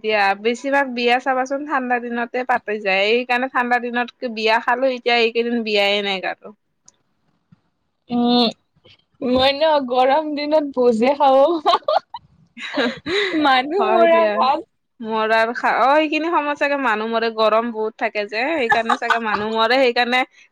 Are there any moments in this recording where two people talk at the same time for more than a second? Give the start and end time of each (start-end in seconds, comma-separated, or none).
none